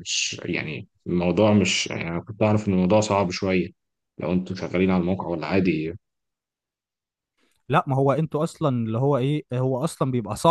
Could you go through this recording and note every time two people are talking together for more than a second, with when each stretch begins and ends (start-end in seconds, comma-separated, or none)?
none